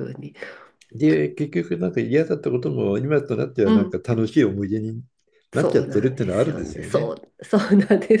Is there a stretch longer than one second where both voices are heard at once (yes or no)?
yes